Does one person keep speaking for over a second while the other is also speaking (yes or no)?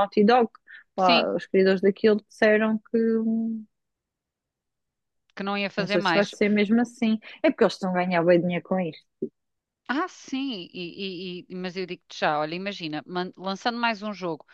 no